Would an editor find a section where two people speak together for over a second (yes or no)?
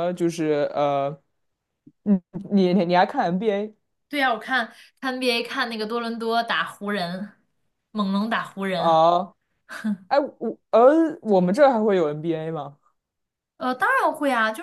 no